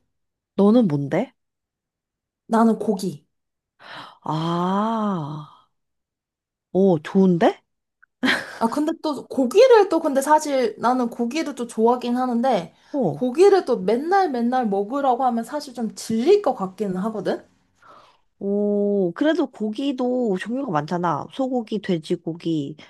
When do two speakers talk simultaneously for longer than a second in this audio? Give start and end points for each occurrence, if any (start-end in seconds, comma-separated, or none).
none